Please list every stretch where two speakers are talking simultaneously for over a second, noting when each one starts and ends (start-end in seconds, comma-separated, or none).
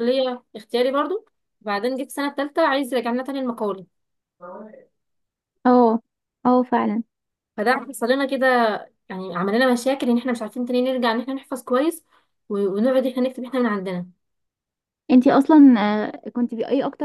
none